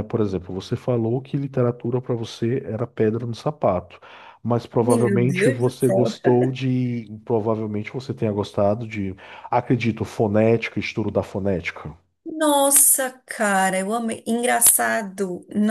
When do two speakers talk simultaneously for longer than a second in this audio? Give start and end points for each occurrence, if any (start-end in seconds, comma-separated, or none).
4.8-6.0